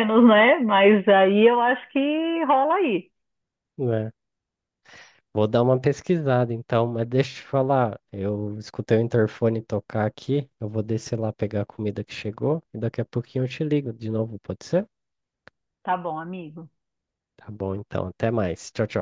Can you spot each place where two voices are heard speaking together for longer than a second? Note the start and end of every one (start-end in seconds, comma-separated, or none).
none